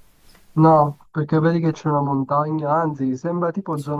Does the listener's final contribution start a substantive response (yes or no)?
no